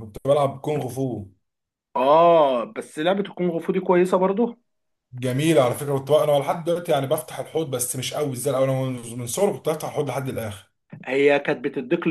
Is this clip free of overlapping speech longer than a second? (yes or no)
yes